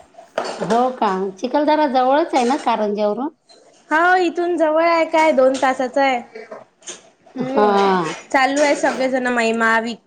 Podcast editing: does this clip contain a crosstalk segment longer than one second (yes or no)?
no